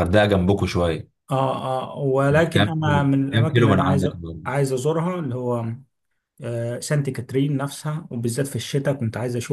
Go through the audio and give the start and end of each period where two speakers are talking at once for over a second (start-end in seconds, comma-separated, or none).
2.5-4.1